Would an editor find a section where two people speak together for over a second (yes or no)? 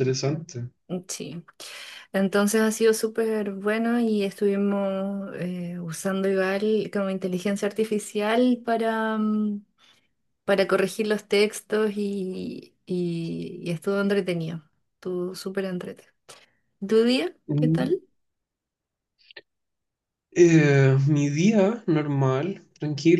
no